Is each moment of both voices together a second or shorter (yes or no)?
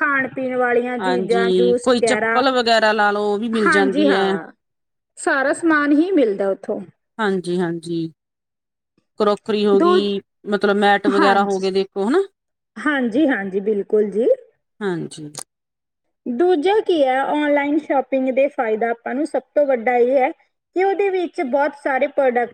no